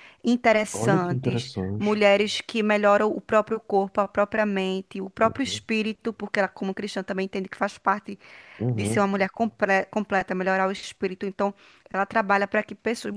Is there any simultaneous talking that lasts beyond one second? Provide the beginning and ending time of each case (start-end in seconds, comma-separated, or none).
0.7-2.0